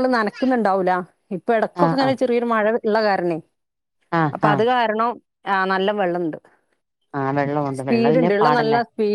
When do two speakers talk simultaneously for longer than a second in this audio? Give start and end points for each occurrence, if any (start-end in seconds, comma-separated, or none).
none